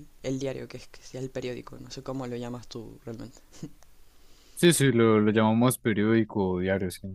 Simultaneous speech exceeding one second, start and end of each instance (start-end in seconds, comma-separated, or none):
none